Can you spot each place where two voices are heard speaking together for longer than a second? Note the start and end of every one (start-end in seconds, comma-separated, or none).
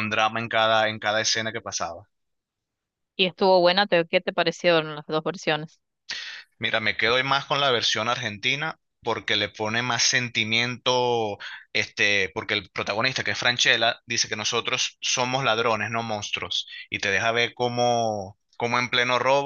none